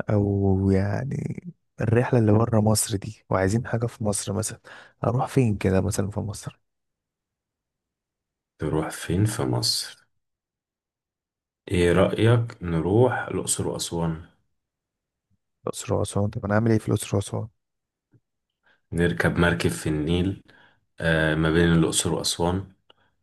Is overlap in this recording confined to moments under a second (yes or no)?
yes